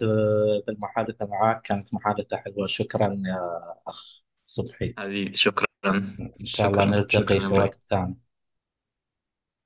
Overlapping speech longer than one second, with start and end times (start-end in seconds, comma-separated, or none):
6.5-7.7